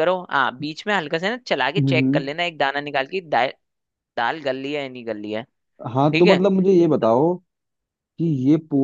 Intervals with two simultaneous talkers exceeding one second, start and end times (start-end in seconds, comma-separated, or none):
none